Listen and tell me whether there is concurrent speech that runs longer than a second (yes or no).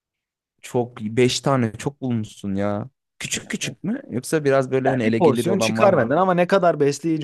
yes